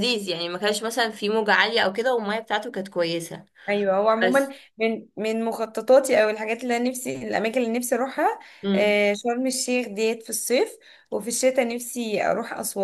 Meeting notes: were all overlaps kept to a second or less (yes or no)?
yes